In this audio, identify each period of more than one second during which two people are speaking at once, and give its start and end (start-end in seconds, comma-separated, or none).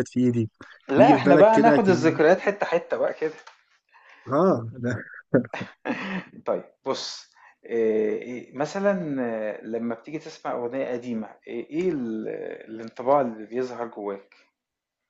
1.0-2.5